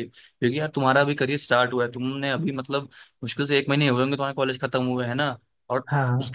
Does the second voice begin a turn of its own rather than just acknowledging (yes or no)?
no